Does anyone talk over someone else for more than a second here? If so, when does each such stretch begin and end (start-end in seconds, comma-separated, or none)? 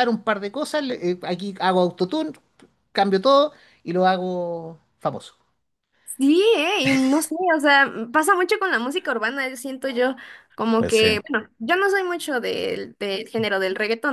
none